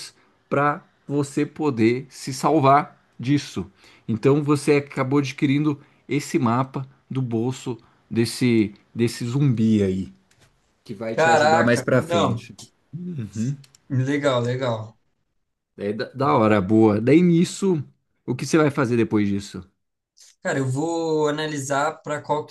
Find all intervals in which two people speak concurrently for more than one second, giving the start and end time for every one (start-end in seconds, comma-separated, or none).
11.1-12.5